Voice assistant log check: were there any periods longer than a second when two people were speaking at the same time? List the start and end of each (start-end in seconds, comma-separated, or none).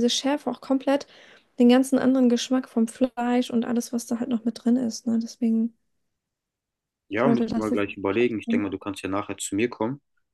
7.1-8.6